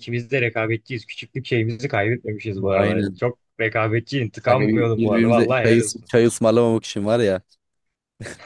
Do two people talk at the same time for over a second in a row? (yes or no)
yes